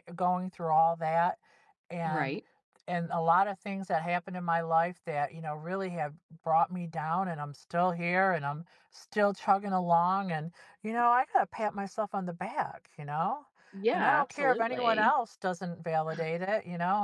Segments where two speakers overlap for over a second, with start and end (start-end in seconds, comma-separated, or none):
13.9-15.1